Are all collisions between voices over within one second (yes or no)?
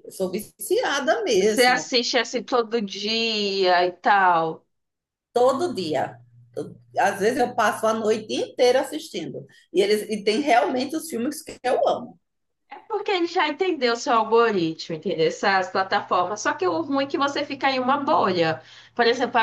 yes